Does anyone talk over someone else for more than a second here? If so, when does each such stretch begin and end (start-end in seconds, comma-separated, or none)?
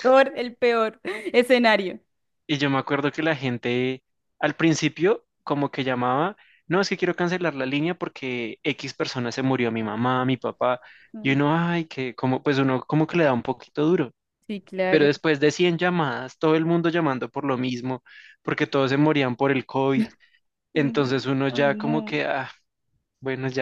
20.7-22.2